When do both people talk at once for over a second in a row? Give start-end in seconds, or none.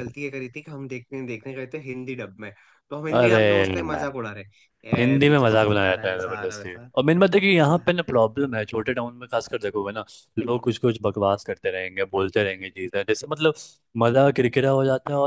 5.2-6.9